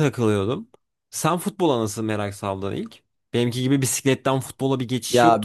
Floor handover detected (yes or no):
yes